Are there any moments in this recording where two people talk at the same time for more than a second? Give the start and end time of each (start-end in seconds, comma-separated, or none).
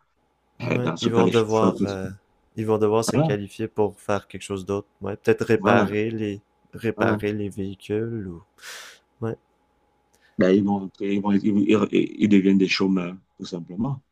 0.6-2.1